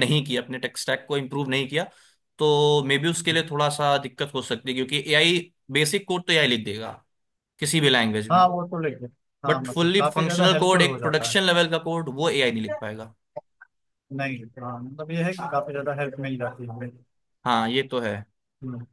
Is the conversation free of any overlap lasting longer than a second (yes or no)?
no